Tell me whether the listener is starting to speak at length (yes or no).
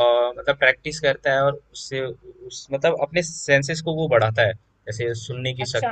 yes